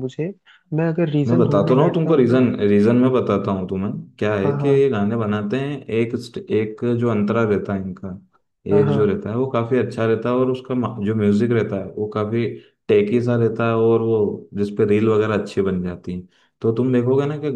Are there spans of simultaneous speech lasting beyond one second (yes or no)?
yes